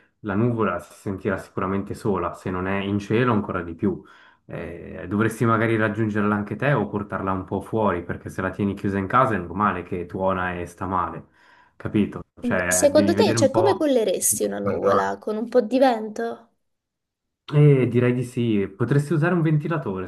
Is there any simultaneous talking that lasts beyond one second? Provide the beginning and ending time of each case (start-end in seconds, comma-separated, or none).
12.7-13.9